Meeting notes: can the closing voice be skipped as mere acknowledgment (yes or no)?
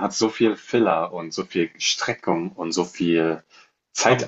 yes